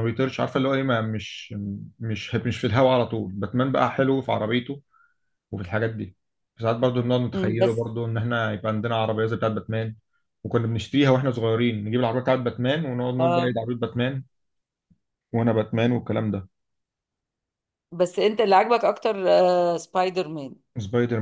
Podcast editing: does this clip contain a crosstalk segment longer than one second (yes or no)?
no